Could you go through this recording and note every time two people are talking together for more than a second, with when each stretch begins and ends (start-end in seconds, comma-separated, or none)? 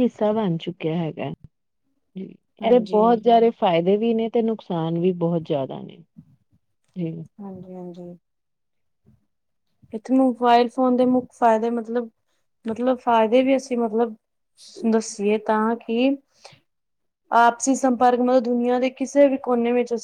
none